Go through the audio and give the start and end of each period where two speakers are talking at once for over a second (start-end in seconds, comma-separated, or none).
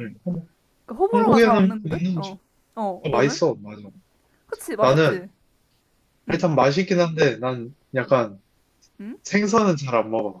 1.1-2.4